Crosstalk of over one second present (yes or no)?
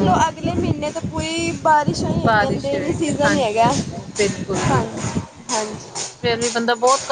yes